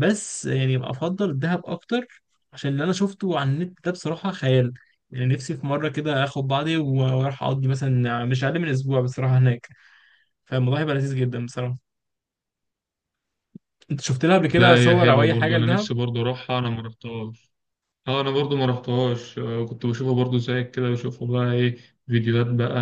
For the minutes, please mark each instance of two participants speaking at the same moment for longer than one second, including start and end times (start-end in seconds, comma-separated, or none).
14.6-15.9